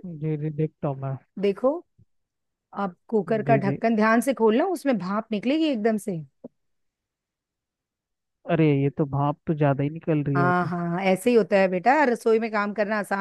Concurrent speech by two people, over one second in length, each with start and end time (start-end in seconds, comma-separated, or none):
none